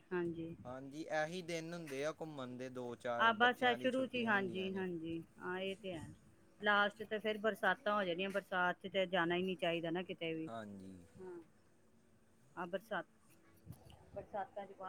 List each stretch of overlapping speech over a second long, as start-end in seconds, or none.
3.2-4.9